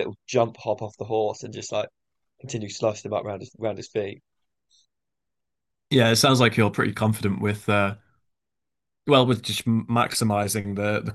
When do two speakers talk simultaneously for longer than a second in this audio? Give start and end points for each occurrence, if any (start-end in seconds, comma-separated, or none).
none